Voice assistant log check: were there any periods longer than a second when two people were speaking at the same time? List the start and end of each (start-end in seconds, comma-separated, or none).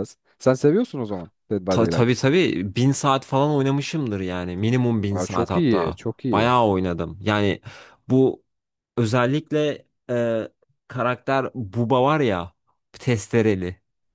5.1-6.5